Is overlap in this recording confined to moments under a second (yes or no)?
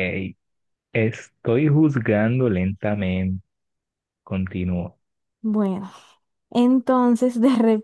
yes